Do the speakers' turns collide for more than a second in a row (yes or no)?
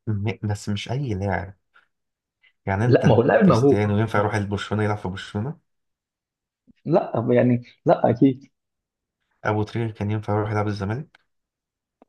yes